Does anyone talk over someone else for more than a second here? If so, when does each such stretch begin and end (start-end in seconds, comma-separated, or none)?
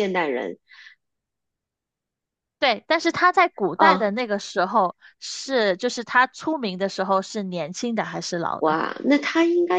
none